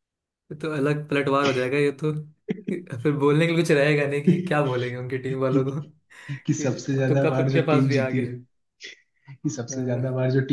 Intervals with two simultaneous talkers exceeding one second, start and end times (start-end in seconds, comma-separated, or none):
6.6-8.4